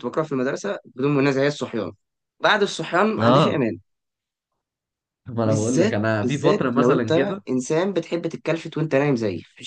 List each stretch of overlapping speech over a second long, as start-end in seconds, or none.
5.5-7.4